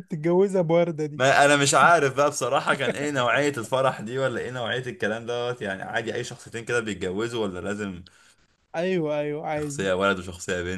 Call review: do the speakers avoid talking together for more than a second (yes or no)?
yes